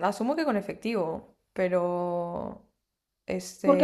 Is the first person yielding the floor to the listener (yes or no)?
yes